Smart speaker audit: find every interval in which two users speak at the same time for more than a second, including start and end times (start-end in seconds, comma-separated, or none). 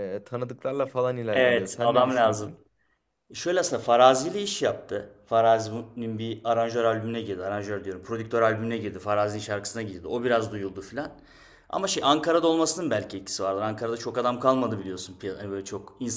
1.3-2.5